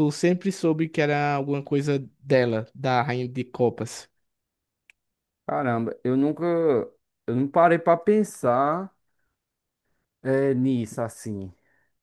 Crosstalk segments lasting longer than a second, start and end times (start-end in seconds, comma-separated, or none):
none